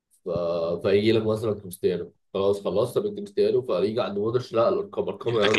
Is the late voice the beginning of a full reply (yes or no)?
no